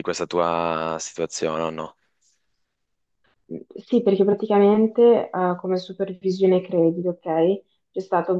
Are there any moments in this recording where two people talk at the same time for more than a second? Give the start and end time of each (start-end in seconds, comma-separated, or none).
none